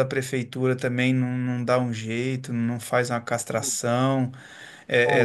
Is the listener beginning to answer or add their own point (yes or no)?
no